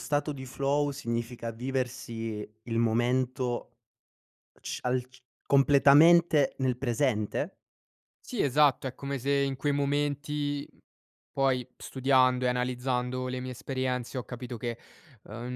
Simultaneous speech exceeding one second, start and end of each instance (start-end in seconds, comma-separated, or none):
none